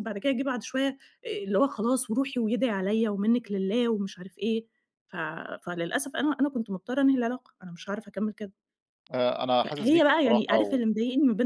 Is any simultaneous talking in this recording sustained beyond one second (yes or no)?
yes